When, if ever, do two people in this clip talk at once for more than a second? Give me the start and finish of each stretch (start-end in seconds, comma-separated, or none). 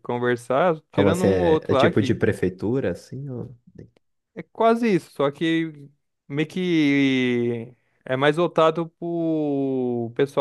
0.9-2.2